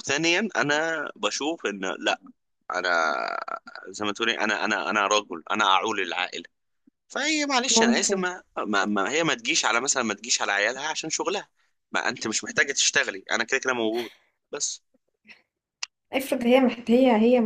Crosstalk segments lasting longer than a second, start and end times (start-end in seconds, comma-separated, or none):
none